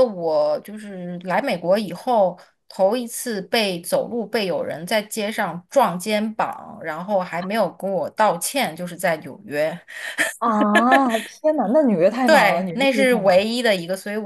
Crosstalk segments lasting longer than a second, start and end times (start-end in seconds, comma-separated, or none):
12.2-13.6